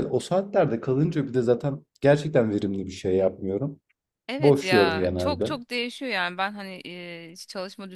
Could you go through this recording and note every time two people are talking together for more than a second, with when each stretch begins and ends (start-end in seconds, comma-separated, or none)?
4.4-5.6